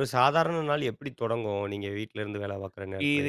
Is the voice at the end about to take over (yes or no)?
yes